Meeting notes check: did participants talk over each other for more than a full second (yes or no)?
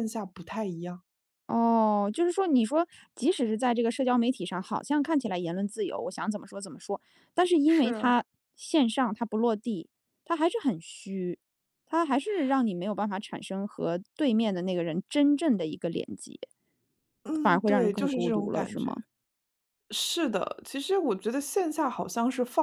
yes